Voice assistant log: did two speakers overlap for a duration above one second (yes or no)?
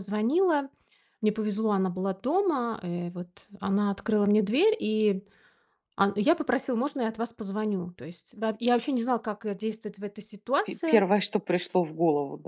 no